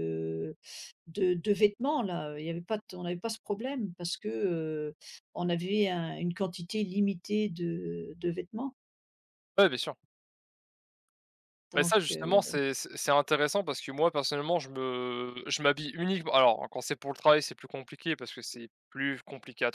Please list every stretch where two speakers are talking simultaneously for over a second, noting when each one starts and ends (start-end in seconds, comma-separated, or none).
none